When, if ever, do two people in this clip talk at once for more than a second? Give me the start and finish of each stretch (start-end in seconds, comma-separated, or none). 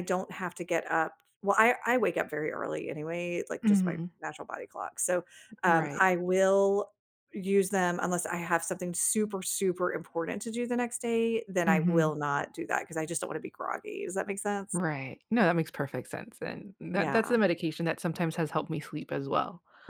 none